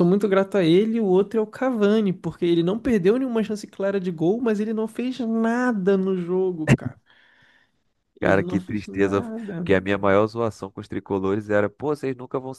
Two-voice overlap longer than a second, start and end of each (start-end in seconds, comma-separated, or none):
8.2-9.7